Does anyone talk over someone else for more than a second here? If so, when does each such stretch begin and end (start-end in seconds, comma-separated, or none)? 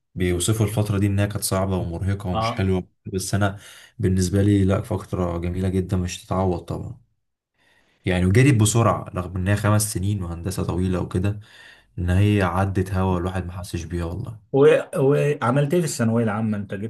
none